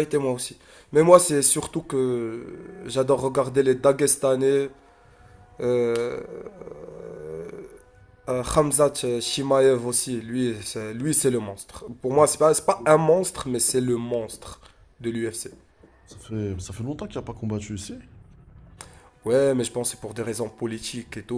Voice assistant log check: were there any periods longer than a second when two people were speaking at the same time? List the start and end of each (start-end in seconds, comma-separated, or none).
none